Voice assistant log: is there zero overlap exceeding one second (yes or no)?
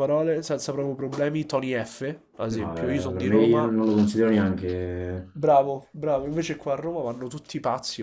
no